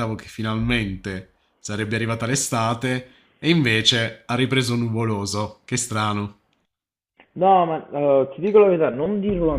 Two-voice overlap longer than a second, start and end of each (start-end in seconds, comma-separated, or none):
none